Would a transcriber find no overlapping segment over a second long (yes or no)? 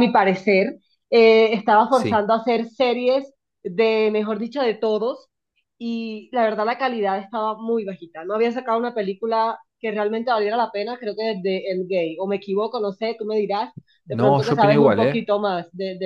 no